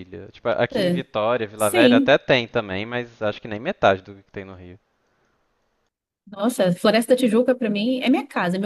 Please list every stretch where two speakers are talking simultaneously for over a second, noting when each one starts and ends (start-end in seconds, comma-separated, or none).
none